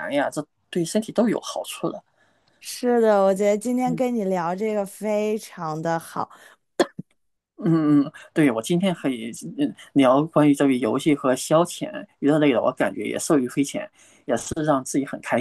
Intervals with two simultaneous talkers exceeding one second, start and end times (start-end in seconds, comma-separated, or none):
none